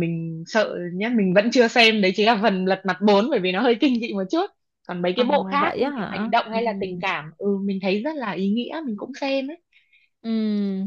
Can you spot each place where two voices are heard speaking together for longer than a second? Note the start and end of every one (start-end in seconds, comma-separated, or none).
5.2-7.0